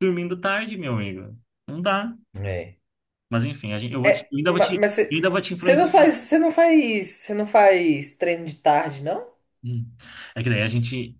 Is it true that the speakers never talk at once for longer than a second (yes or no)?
no